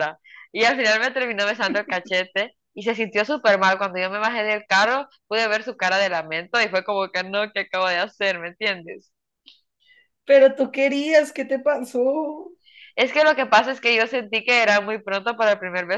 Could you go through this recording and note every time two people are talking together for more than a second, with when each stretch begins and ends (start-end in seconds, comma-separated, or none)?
none